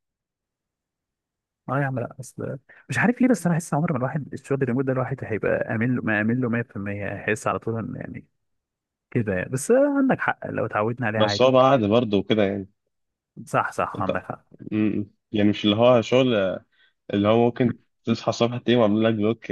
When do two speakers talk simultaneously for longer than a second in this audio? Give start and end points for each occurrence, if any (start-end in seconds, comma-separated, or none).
none